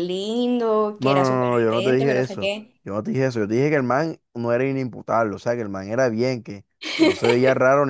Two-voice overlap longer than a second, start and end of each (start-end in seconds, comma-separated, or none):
1.0-2.7